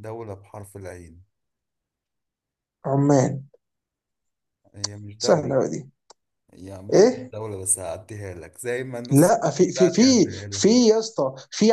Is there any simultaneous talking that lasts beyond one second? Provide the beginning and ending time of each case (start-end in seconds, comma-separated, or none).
9.1-10.9